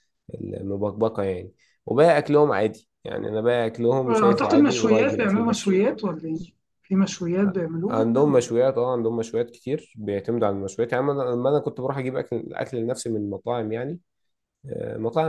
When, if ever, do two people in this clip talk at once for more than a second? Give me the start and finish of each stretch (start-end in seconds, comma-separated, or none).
4.1-5.8